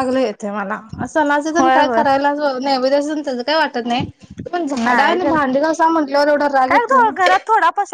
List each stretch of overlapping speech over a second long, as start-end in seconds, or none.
none